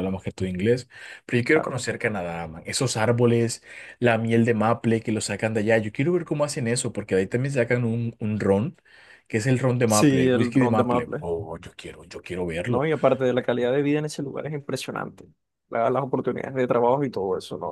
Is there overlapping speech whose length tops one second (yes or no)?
yes